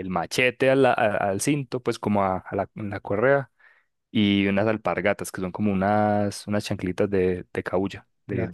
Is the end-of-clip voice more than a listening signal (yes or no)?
yes